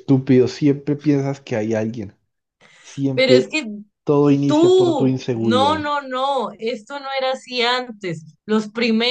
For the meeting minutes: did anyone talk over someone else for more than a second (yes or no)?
yes